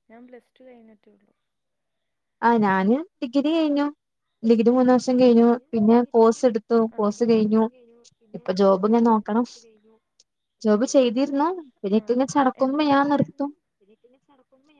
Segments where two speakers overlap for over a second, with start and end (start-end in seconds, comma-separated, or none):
none